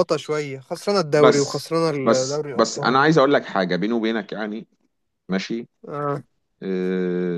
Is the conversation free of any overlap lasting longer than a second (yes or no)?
no